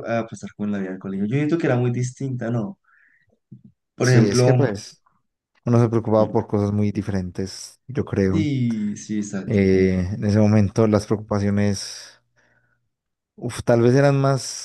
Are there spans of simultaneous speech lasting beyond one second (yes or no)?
no